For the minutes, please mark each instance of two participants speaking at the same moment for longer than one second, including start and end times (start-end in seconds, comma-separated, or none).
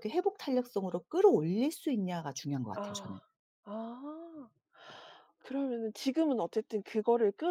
none